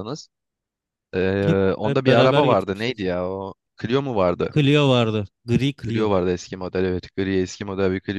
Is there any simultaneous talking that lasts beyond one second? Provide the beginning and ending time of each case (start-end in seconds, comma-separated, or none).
1.5-3.0